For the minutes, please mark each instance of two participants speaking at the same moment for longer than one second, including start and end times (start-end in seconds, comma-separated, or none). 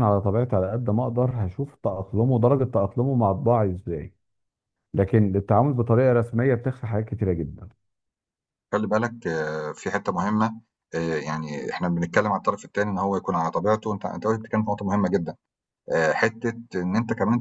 none